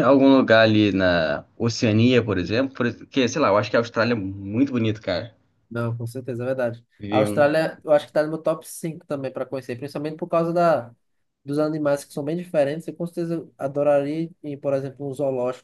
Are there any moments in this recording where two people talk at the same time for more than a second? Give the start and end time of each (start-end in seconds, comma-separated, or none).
none